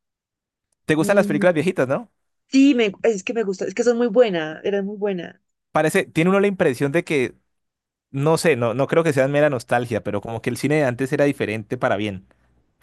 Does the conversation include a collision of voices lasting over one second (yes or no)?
no